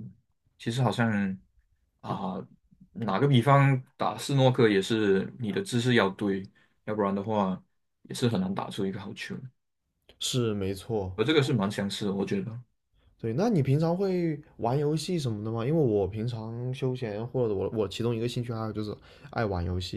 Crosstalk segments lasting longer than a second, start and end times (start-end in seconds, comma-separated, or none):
none